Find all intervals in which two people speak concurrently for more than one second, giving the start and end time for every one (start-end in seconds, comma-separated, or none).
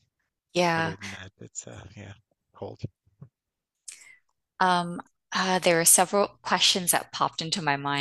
none